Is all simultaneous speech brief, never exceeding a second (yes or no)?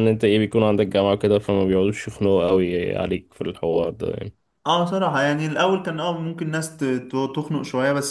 yes